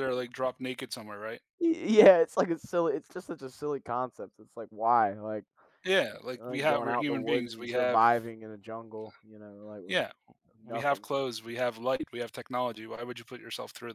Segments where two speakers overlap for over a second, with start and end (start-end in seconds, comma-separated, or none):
6.3-8.0